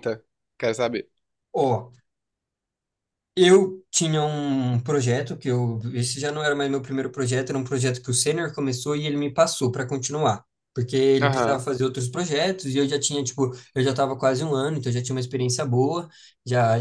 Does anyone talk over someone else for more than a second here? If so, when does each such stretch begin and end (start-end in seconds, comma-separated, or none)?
none